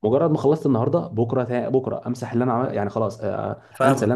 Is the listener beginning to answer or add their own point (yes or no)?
no